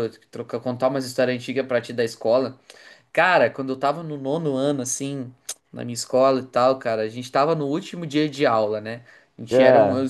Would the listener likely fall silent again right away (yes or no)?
yes